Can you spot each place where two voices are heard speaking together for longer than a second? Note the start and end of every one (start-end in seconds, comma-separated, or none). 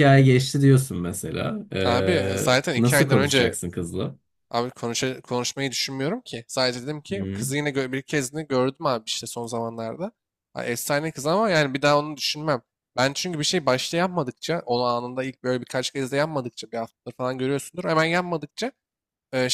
1.8-3.6